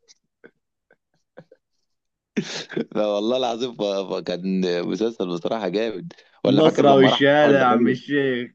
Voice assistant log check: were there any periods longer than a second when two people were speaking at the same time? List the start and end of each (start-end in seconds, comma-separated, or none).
6.5-8.0